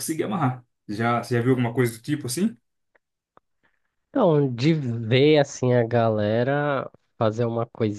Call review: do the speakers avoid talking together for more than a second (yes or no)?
yes